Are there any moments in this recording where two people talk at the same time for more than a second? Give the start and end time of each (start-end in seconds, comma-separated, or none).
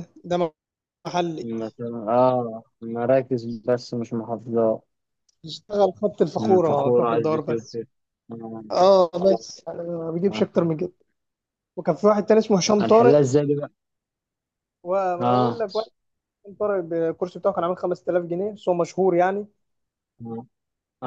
6.3-7.8